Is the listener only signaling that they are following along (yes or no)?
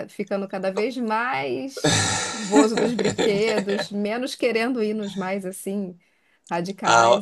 no